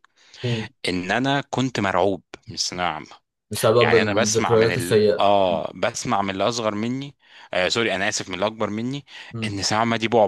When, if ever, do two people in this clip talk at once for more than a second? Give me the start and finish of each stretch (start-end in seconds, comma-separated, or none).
3.8-5.6